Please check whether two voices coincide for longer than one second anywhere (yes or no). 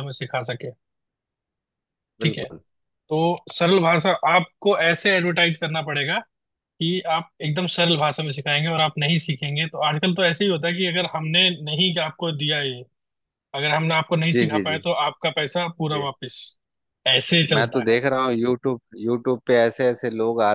no